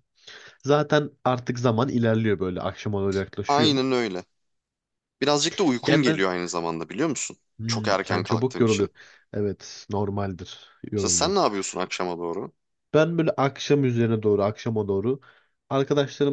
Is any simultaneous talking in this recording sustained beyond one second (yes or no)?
yes